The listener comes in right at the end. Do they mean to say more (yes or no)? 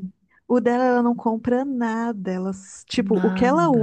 no